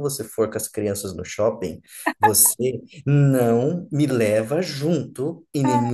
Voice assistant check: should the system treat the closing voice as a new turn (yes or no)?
no